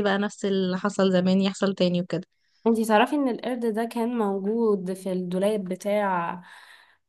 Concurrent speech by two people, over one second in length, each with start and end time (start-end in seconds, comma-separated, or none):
none